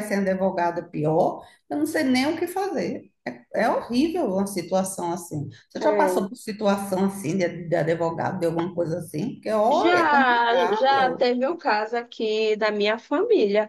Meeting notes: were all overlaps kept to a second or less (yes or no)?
no